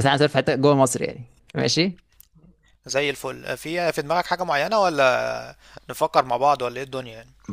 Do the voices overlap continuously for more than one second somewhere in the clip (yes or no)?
no